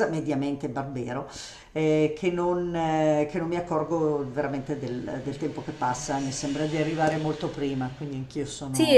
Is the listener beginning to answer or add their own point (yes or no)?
yes